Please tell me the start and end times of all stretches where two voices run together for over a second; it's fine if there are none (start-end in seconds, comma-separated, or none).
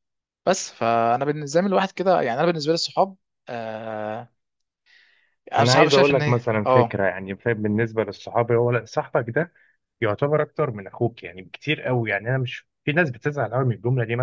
5.6-7.0